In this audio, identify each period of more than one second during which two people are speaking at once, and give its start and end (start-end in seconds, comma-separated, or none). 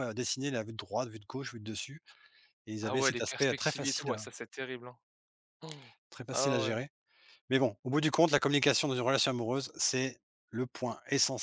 2.8-4.2